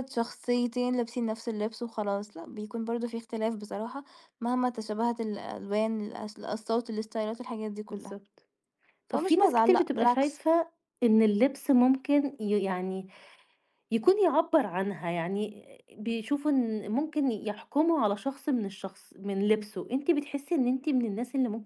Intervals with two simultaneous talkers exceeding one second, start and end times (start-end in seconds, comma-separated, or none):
9.1-10.4